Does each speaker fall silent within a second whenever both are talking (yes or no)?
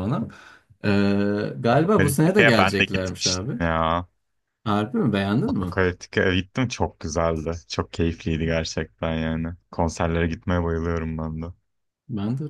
no